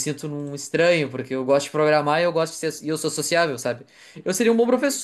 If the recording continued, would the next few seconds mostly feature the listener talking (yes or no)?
no